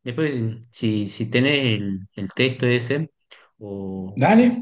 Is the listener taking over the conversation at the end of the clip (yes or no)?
no